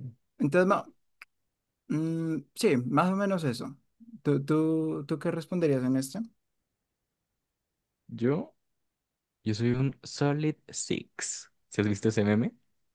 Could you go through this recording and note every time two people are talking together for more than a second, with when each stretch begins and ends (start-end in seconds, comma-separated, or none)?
none